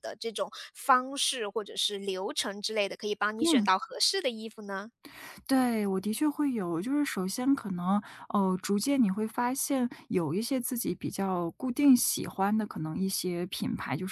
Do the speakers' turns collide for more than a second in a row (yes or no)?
no